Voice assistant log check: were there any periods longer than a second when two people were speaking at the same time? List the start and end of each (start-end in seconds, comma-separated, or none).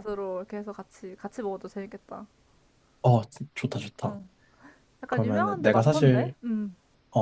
5.1-6.3